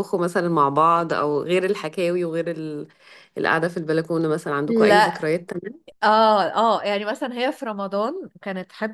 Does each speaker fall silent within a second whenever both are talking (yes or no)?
yes